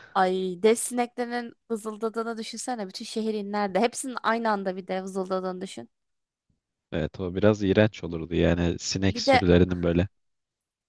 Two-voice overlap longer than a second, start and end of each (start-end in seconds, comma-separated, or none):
none